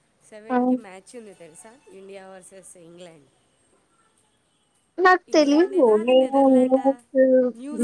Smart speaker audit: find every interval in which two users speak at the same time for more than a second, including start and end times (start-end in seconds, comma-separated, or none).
5.3-6.9